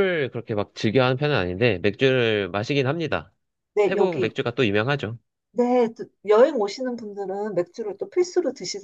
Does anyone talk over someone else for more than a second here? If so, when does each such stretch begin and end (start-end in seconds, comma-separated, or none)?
none